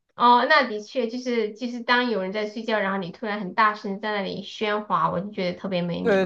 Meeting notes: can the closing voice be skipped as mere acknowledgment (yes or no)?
no